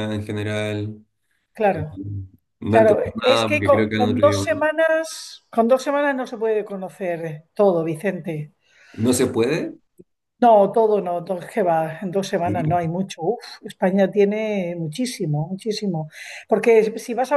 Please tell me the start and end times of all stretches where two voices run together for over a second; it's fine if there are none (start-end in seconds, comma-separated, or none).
2.7-4.5